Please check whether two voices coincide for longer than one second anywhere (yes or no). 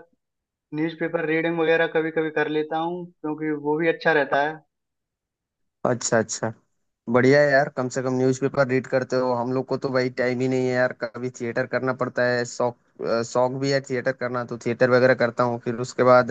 no